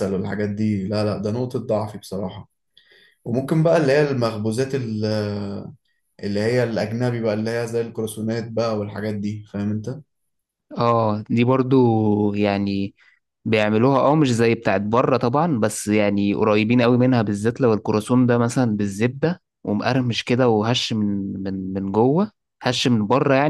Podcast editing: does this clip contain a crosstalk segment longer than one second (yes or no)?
no